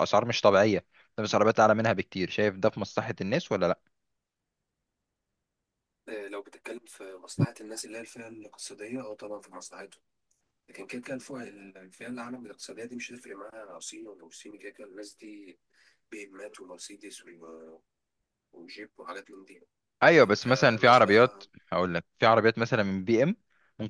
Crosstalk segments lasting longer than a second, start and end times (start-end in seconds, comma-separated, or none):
20.1-21.5